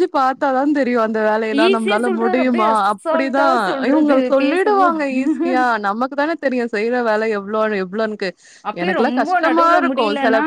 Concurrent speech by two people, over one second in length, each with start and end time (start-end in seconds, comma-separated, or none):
1.7-5.0